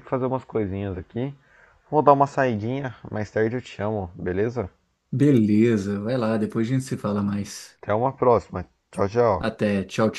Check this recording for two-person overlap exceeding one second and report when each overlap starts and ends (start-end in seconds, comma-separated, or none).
none